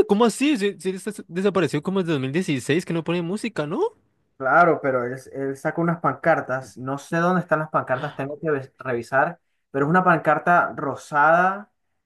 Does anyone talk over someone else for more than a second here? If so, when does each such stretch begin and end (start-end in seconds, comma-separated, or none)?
none